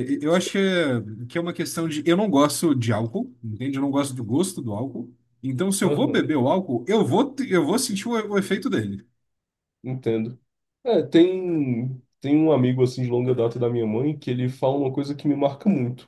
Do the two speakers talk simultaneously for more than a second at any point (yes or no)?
no